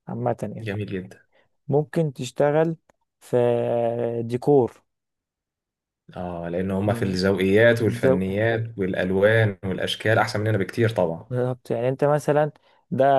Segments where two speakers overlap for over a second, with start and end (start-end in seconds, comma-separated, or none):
none